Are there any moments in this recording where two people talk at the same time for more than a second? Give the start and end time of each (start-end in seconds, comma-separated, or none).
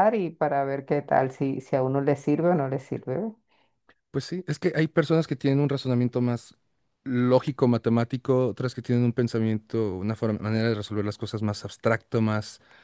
none